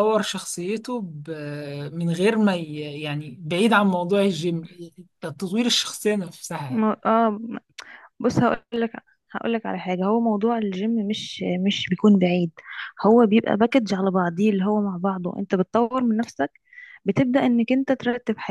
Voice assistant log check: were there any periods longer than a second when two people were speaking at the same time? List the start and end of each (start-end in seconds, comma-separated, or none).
none